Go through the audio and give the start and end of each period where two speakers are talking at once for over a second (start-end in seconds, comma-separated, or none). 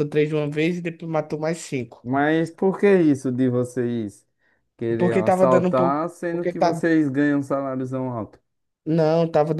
5.0-6.8